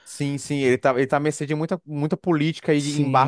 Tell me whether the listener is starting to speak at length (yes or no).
yes